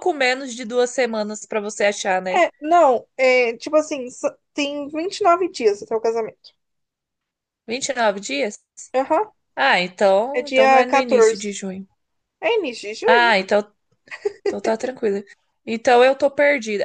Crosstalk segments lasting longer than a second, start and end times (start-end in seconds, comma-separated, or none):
10.3-11.6